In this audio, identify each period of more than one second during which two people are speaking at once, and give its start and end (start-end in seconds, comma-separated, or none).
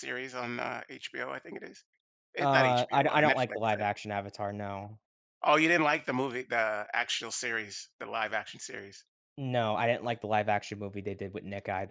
2.4-3.8